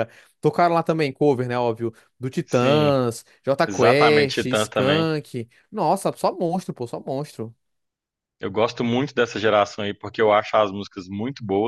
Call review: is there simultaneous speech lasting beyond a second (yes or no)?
yes